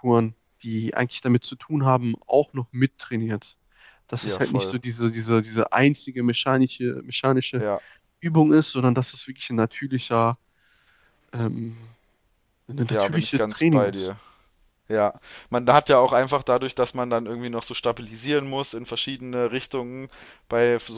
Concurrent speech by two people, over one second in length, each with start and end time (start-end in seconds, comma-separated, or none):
12.9-14.2